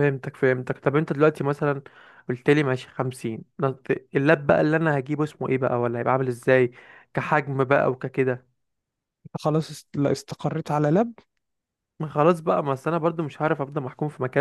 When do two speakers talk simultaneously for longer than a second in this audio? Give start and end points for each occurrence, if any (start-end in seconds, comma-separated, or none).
none